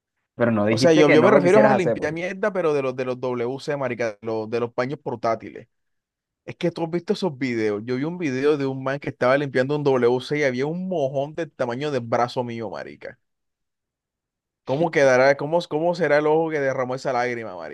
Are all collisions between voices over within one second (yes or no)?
no